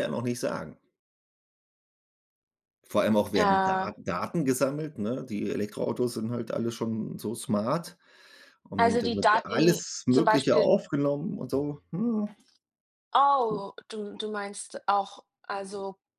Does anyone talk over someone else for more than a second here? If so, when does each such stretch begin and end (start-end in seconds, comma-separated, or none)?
8.8-10.7